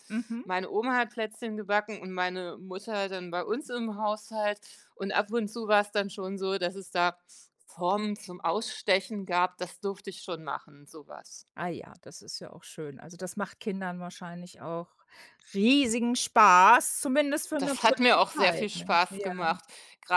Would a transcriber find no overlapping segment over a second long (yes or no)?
no